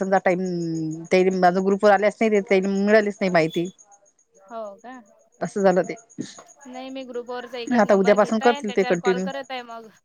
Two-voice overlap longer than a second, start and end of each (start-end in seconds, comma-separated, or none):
7.8-9.3